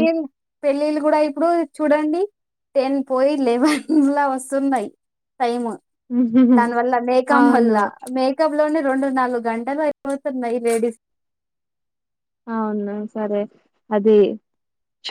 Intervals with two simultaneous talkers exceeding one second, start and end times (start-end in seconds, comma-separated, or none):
none